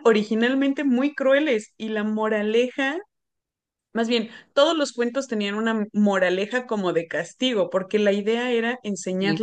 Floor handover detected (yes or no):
no